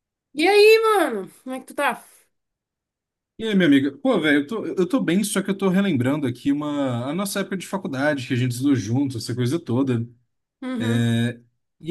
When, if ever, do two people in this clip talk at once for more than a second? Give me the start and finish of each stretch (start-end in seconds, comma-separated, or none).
none